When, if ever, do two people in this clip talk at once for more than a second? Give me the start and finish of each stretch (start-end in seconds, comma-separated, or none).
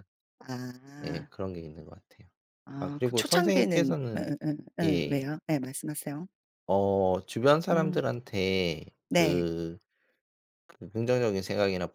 2.8-4.2